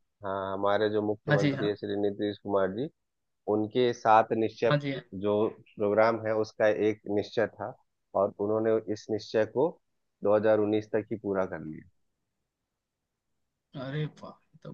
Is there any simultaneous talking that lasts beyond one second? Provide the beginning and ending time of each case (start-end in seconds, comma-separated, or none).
none